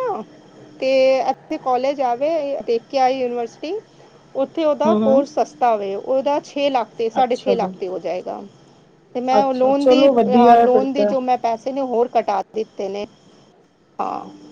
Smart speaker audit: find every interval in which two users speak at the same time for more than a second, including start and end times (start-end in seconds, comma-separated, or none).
9.4-11.1